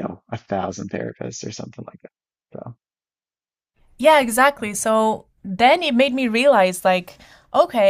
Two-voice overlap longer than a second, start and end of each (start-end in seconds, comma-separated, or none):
none